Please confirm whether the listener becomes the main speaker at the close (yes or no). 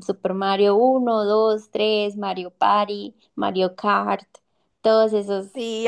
yes